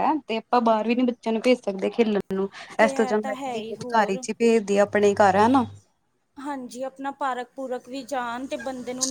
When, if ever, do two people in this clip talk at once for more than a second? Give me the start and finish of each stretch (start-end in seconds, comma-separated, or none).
2.8-4.2